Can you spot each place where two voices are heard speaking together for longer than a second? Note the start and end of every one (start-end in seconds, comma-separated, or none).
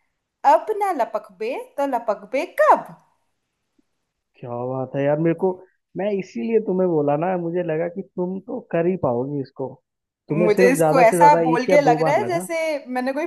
10.3-12.5